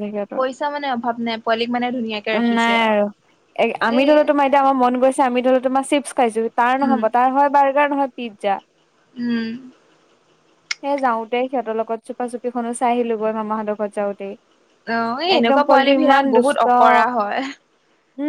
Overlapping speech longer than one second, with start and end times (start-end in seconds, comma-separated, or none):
15.4-17.1